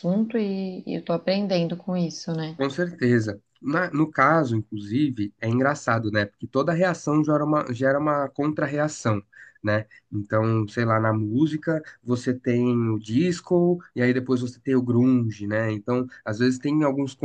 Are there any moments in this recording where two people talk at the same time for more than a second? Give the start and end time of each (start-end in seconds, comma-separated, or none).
none